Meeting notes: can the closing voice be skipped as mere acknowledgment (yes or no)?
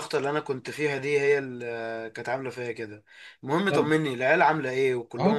no